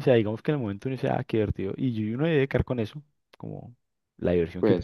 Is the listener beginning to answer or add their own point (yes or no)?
no